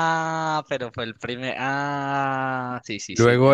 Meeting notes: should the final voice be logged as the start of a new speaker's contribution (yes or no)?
yes